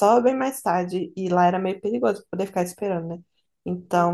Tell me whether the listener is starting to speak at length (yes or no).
no